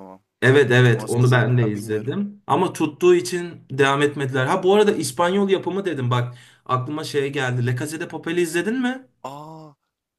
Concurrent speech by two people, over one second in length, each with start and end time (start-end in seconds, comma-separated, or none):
0.8-2.2